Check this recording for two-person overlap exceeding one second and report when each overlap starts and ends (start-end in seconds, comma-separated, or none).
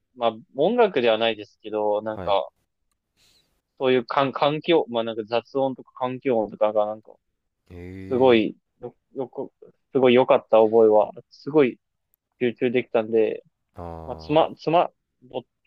none